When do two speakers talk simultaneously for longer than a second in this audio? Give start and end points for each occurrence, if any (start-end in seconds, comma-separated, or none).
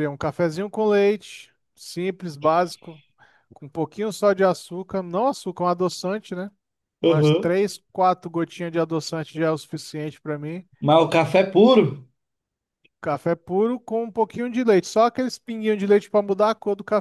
none